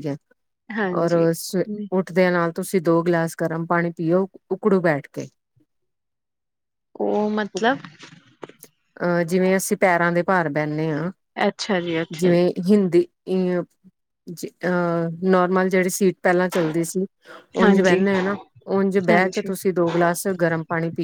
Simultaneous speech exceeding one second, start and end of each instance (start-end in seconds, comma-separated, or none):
none